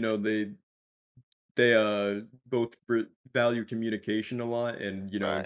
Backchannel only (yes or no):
yes